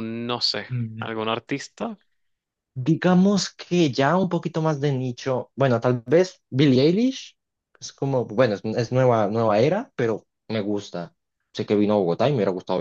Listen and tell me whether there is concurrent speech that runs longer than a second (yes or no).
no